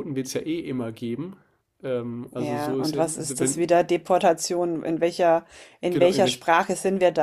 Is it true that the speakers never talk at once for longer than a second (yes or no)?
no